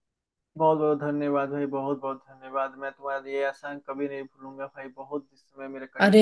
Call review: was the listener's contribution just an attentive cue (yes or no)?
no